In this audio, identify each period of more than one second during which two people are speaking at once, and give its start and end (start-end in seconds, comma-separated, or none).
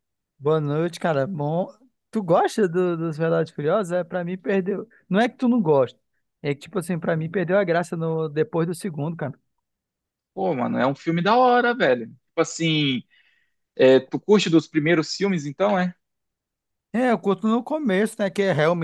none